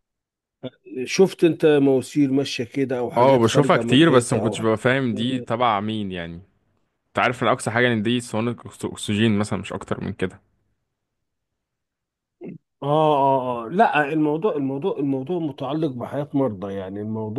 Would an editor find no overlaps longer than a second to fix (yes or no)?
no